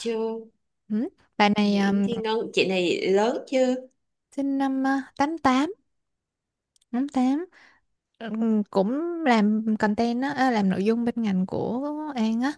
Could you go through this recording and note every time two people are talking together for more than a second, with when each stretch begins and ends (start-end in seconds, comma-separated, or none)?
none